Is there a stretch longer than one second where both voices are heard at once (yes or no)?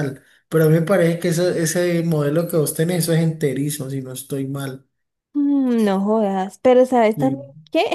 no